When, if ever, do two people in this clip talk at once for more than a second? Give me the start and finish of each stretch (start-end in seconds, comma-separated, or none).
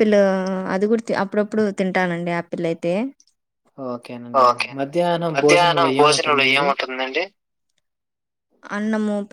5.3-6.7